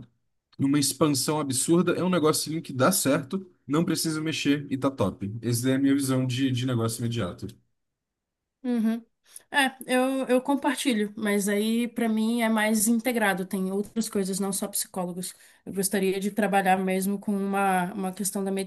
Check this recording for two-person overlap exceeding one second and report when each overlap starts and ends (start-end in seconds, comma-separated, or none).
none